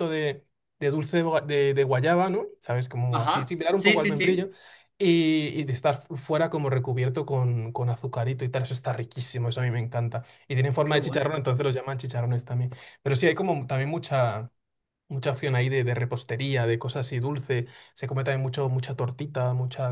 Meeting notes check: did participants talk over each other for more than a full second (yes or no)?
yes